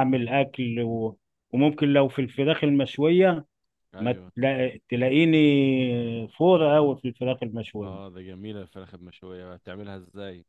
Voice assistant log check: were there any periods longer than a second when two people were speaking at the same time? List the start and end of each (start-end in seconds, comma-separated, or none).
none